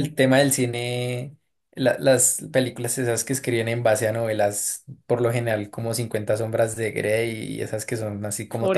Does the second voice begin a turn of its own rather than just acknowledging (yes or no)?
yes